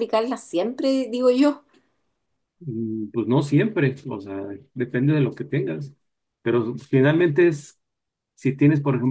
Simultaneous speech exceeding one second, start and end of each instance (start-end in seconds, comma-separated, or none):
none